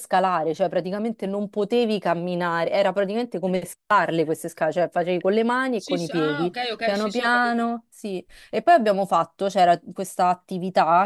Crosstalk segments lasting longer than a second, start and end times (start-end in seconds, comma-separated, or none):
5.8-7.6